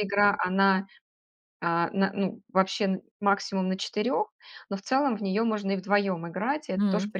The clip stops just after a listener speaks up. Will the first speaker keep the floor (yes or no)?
yes